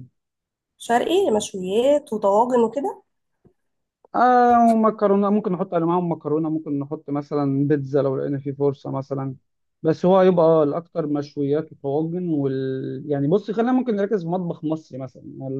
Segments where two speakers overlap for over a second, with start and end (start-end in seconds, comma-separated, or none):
none